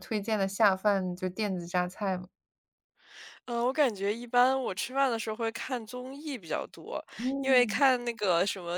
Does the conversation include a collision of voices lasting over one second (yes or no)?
no